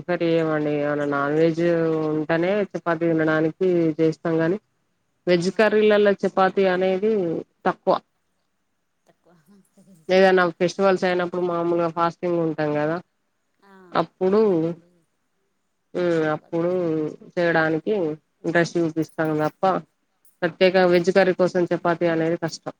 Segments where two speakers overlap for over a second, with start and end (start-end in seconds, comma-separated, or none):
none